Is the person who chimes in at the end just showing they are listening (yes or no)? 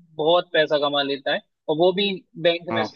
yes